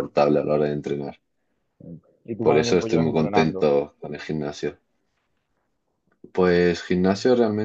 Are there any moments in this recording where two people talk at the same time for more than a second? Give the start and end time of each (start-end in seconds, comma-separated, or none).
2.4-3.7